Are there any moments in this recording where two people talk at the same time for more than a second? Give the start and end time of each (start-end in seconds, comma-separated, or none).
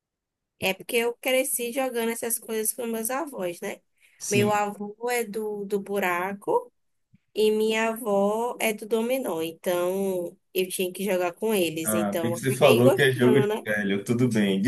11.8-13.7